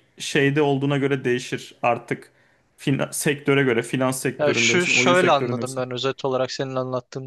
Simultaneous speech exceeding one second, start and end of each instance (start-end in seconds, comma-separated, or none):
4.4-5.8